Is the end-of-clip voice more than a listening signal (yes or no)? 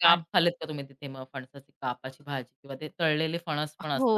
yes